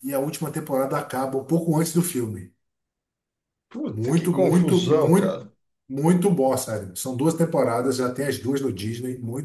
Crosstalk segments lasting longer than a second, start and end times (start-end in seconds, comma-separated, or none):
3.9-5.4